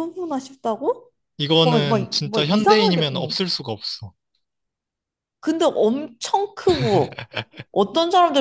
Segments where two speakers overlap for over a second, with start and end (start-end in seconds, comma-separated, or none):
1.6-3.4